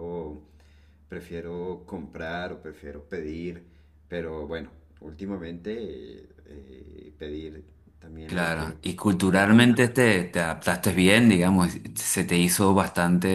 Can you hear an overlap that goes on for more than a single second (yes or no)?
yes